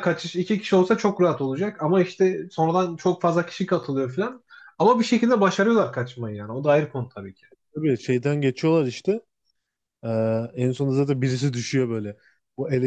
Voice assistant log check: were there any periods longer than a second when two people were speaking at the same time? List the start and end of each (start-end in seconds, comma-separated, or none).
none